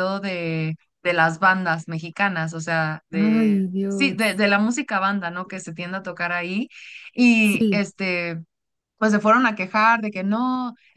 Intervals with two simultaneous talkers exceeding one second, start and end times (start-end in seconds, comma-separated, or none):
3.1-4.4